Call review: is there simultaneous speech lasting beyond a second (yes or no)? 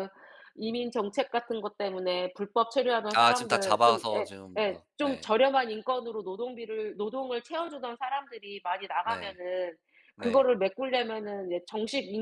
yes